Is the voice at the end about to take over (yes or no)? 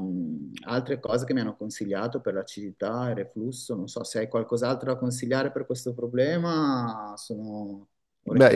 yes